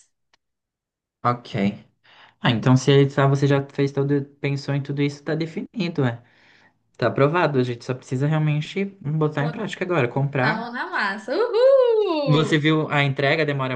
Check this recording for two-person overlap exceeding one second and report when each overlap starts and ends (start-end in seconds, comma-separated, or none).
none